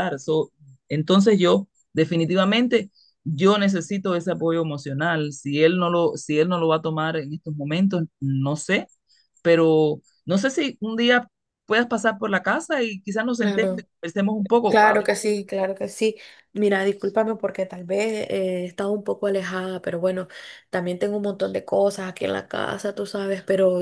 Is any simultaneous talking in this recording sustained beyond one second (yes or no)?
no